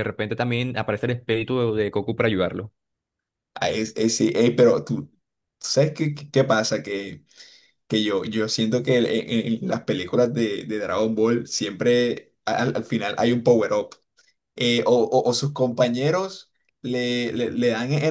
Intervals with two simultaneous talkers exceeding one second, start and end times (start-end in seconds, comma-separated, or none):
none